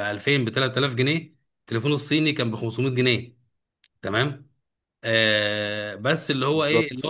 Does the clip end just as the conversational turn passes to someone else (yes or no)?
no